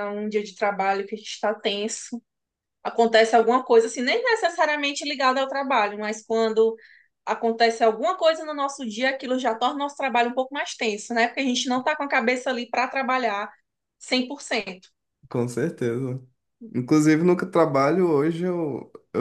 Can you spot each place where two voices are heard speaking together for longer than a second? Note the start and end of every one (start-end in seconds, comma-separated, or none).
none